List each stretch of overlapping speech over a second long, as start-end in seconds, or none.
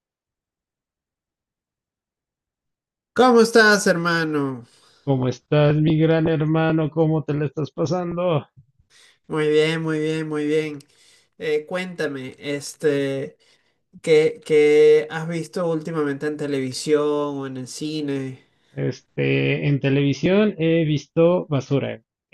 none